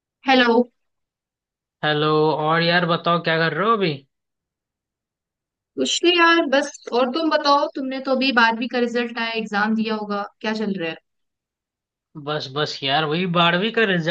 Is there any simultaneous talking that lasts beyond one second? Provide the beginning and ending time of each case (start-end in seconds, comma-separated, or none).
none